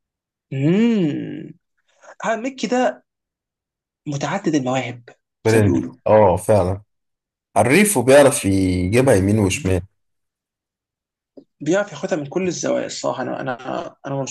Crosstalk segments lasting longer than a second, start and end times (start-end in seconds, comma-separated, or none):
none